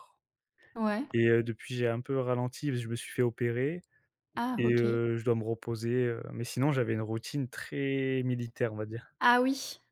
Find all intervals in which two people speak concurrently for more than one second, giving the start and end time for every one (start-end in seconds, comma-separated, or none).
none